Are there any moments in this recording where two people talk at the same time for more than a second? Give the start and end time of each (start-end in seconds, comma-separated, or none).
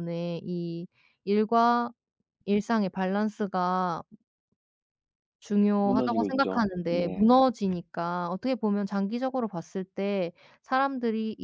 5.8-7.3